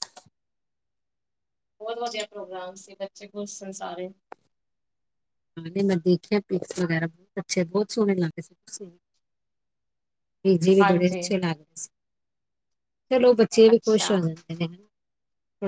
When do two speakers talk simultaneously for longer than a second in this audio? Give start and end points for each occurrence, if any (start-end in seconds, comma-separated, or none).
none